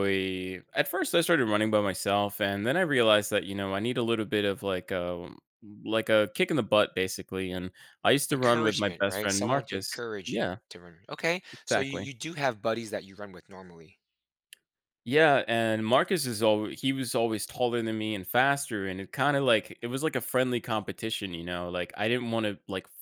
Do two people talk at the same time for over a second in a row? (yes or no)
yes